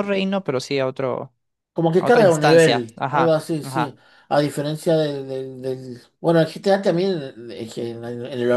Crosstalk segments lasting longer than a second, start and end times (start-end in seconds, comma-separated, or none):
2.0-4.0